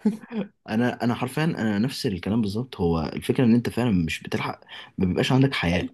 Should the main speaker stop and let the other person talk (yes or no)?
yes